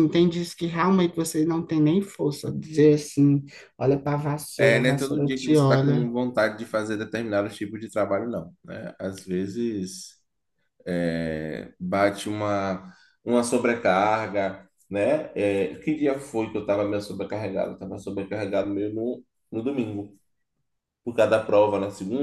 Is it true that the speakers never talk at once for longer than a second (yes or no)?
no